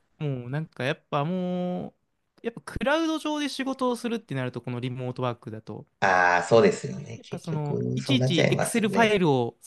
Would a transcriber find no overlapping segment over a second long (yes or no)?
no